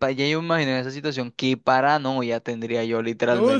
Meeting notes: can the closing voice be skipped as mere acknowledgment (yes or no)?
no